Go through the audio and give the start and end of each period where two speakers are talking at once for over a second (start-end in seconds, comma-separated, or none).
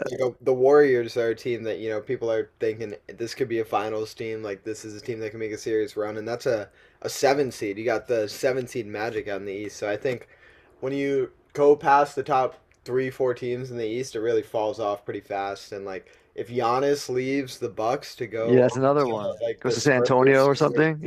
18.4-20.5